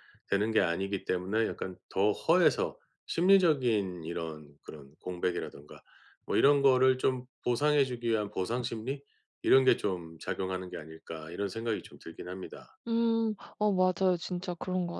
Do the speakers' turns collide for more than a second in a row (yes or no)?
no